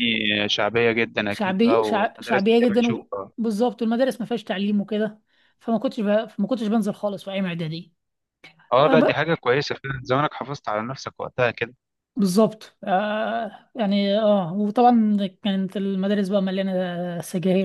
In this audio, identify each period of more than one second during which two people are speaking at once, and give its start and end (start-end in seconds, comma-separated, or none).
1.3-3.3